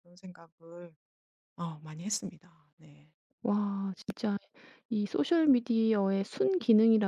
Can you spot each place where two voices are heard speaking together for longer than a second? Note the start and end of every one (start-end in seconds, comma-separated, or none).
none